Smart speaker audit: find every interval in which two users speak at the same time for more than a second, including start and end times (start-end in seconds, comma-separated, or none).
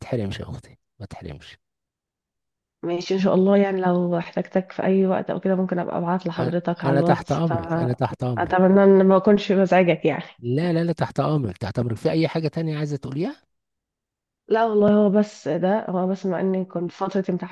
6.4-8.6